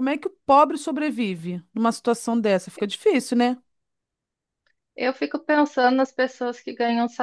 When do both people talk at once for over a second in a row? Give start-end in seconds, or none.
none